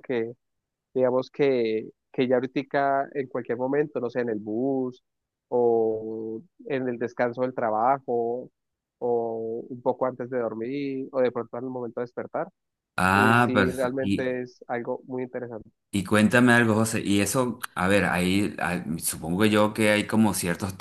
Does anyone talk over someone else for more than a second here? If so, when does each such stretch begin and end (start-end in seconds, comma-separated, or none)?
13.1-14.4